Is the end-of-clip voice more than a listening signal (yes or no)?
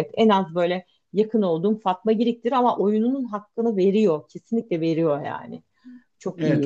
yes